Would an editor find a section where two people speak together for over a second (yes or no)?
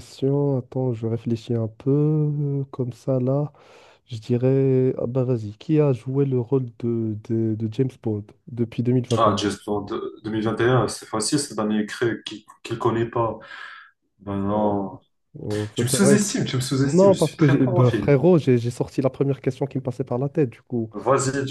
yes